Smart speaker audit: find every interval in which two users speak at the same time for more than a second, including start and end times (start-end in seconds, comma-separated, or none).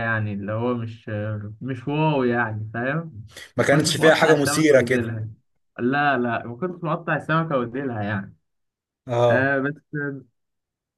3.6-5.2